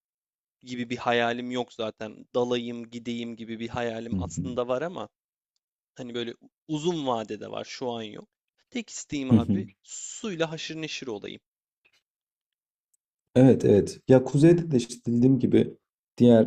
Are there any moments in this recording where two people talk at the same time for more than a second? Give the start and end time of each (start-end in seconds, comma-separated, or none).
none